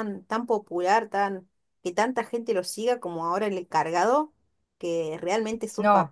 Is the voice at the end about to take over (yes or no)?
no